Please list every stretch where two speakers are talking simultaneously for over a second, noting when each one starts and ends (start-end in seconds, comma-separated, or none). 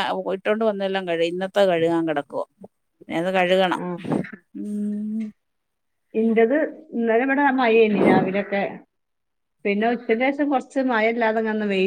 none